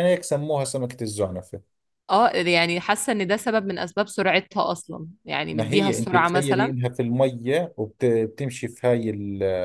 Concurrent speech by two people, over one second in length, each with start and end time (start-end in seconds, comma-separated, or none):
5.5-6.7